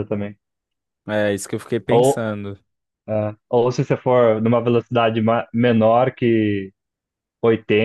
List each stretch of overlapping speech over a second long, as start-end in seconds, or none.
none